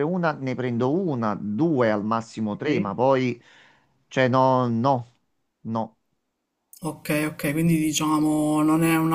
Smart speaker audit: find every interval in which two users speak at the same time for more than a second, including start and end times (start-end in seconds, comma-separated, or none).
none